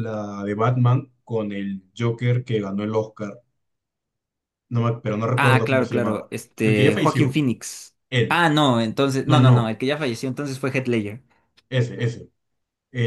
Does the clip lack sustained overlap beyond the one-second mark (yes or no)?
no